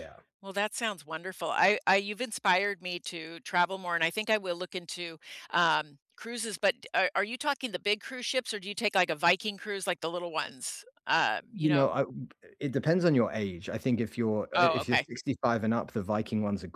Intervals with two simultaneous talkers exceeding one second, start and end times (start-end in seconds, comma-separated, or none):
none